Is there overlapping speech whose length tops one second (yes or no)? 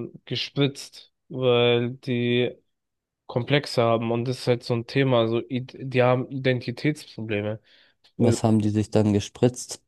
no